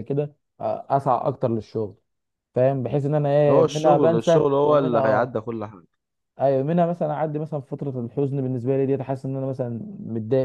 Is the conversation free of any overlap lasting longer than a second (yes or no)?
no